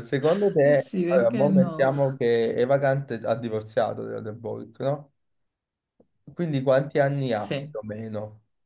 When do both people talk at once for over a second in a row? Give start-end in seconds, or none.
0.6-1.9